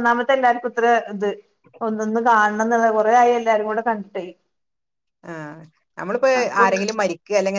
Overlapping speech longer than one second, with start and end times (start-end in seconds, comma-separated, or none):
none